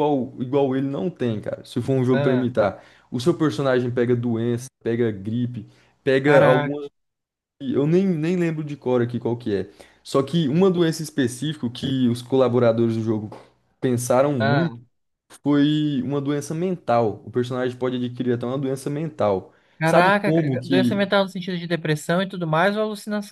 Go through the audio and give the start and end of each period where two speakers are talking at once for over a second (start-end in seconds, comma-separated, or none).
19.8-21.1